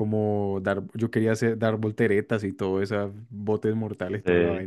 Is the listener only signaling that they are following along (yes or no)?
yes